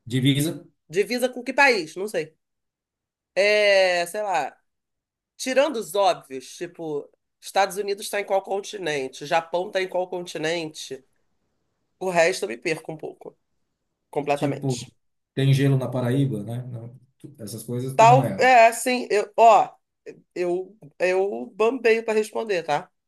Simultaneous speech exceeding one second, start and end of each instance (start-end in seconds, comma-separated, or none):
none